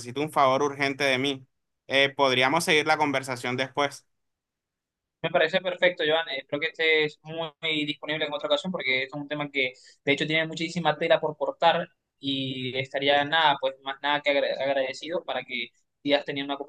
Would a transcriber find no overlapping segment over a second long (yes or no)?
yes